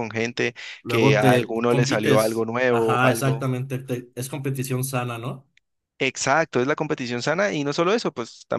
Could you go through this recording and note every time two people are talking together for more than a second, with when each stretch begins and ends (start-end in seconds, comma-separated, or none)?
0.8-3.5